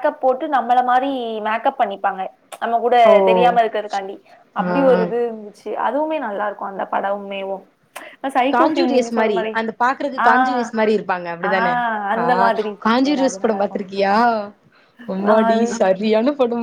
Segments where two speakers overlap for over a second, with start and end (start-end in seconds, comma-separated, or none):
12.2-13.8